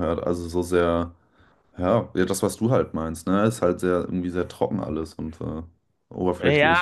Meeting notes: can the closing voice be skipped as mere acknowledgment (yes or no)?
no